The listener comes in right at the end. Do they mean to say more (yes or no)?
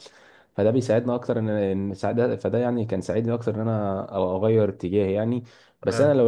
no